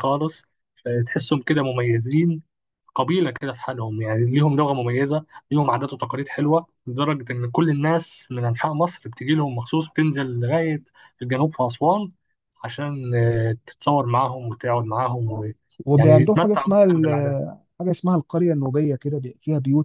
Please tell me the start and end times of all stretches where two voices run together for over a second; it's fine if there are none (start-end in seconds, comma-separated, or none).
16.0-17.4